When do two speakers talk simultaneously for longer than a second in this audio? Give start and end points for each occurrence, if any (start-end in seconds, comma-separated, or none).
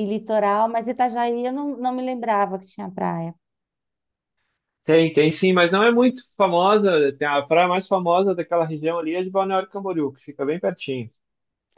none